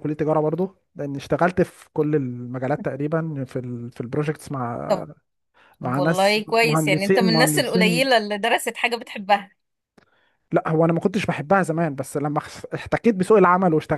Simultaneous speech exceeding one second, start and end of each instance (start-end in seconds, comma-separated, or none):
5.8-8.1